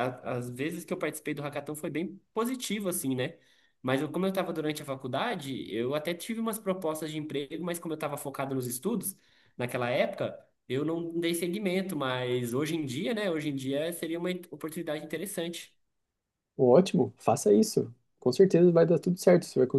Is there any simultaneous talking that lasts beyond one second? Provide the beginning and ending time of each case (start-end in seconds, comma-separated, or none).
none